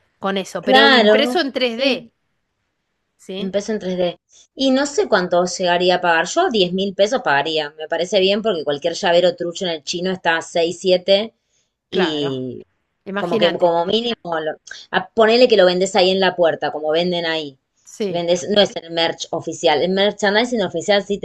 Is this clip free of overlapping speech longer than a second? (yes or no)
no